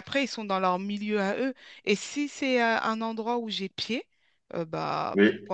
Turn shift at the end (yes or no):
no